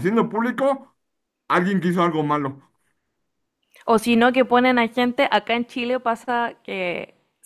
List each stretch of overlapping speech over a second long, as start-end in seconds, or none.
none